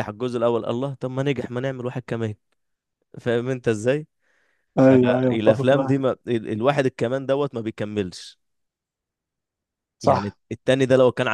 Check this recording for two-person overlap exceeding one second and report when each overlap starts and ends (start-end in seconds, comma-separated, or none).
4.8-6.1